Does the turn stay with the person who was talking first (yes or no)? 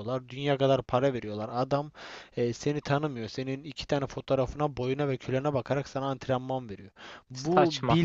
yes